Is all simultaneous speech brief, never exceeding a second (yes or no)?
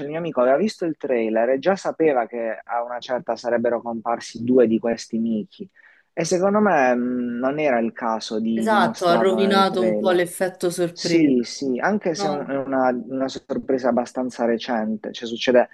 no